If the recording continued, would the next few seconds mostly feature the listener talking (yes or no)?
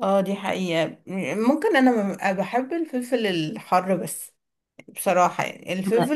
no